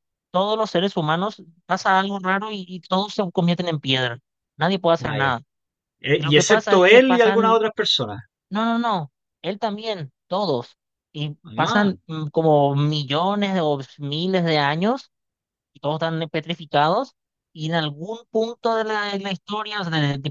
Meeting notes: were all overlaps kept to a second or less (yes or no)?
no